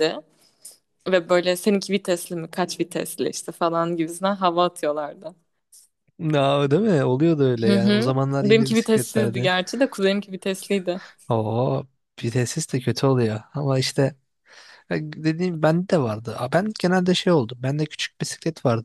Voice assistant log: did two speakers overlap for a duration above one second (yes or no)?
yes